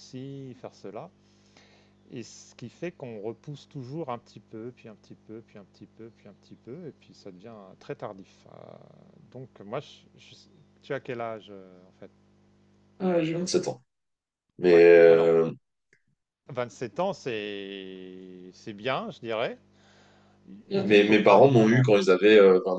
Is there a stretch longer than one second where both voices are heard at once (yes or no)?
yes